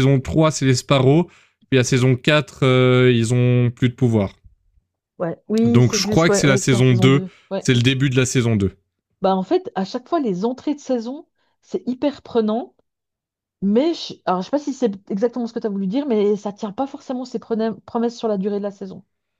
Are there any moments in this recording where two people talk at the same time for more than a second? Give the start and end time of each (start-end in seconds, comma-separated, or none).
5.6-7.7